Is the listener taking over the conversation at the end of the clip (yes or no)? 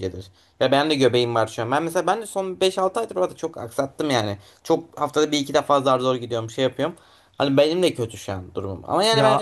no